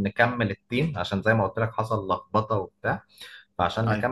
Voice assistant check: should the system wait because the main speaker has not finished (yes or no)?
yes